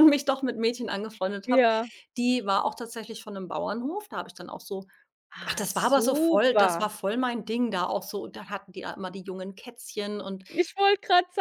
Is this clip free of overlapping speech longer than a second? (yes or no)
no